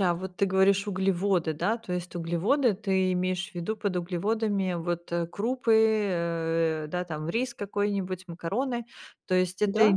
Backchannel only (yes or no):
yes